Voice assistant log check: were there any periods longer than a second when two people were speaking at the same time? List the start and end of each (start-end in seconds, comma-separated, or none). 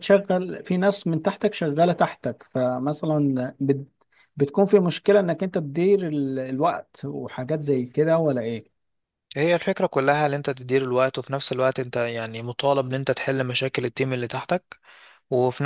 none